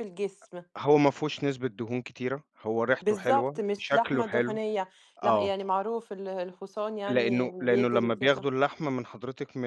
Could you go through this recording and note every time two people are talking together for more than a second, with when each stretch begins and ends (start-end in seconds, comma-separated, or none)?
3.0-4.6, 7.1-8.5